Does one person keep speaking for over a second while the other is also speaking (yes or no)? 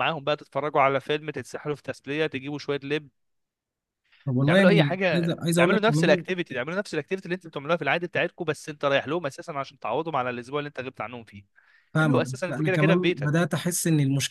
yes